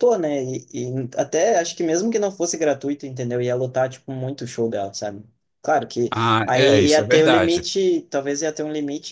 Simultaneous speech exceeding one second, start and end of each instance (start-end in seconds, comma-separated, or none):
6.1-7.7